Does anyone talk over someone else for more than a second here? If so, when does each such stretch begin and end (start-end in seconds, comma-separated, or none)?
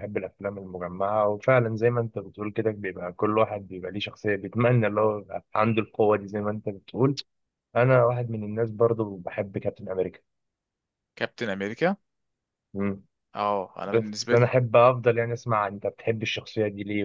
none